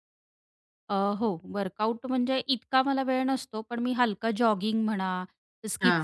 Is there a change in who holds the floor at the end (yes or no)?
no